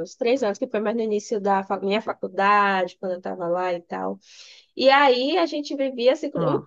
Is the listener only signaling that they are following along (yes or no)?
yes